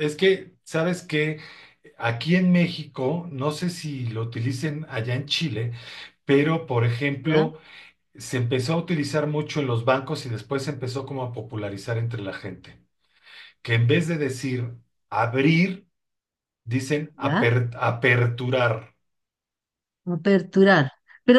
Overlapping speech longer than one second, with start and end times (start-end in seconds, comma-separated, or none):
none